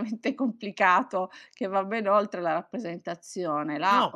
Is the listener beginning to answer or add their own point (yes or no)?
yes